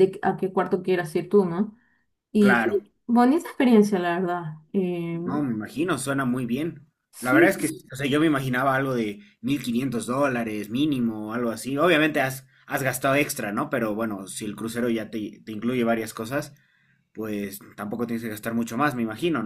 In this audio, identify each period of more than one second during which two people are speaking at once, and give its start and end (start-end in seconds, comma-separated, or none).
none